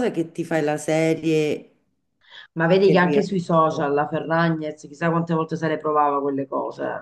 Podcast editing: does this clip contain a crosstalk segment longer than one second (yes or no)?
yes